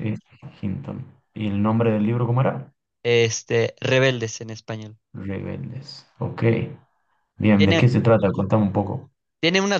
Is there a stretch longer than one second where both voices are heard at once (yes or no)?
no